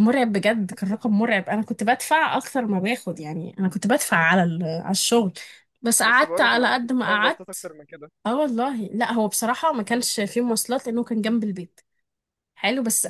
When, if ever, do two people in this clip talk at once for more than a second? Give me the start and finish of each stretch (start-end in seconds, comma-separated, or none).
6.0-7.5